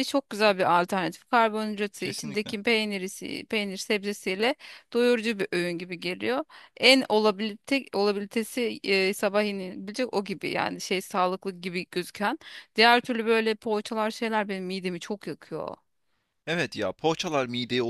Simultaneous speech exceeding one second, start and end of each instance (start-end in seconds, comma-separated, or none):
none